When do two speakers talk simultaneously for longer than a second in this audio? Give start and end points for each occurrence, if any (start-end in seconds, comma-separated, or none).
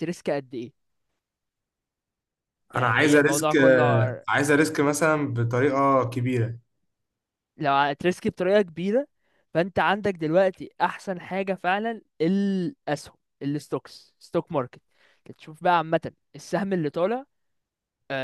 2.8-4.2